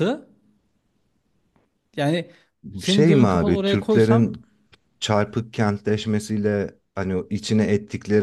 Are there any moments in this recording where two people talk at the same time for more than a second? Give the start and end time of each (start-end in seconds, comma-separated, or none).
2.8-4.4